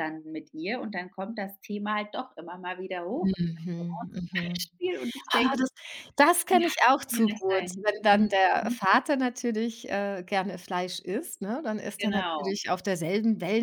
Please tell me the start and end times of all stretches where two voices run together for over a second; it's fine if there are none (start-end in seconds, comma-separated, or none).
3.2-4.7, 6.5-8.8